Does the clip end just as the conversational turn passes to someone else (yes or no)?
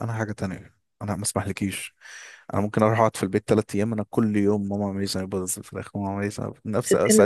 no